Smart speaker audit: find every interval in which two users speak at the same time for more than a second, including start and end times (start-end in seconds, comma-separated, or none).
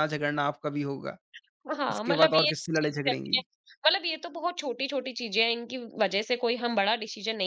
1.9-3.4